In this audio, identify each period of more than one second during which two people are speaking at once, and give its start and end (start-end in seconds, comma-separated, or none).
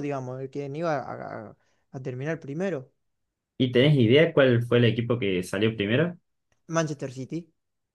none